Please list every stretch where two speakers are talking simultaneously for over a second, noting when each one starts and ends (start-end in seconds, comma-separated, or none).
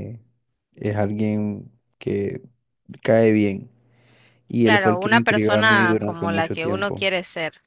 4.6-7.0